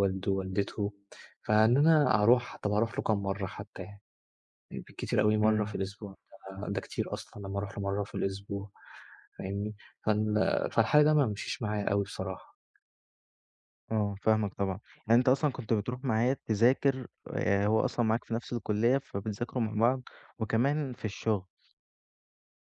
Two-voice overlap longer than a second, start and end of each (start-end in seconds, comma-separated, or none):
none